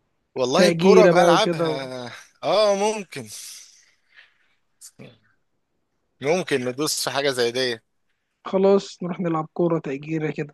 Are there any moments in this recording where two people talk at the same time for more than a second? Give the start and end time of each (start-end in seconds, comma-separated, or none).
0.6-1.9